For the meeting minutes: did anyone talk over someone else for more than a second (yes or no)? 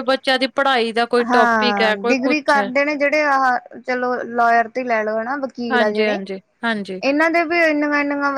yes